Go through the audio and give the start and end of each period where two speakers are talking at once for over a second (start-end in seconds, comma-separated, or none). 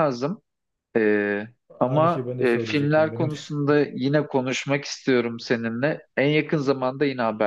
1.8-3.4